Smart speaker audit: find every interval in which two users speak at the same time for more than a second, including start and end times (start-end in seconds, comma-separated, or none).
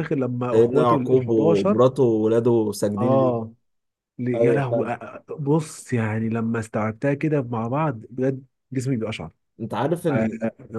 0.5-1.8